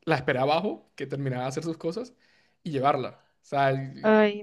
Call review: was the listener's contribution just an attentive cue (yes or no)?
no